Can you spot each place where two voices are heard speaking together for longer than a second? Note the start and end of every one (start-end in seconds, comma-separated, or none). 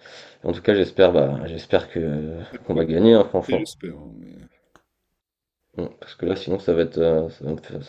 2.4-3.7